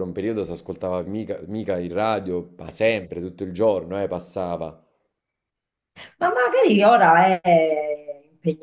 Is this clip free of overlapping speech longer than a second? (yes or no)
yes